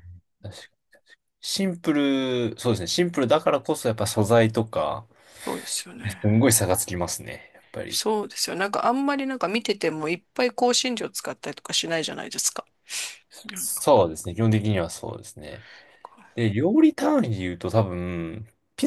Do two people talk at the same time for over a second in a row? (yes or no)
no